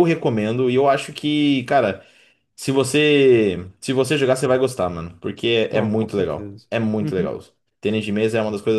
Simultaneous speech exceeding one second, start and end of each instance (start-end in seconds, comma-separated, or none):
5.7-7.4